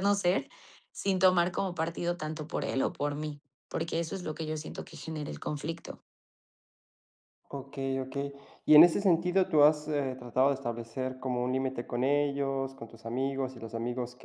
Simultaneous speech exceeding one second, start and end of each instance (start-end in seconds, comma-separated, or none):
none